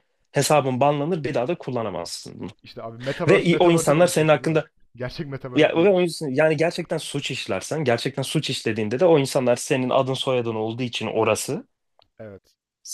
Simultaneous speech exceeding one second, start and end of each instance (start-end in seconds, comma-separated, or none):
3.3-4.6